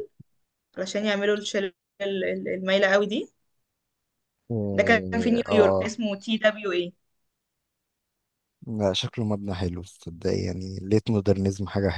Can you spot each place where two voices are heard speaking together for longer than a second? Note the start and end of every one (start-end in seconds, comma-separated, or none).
4.7-6.0